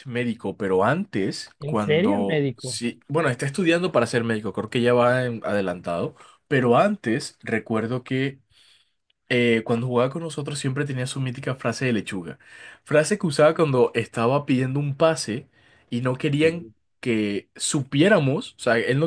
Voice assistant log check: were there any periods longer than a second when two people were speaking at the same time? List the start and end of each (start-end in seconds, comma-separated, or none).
1.6-2.8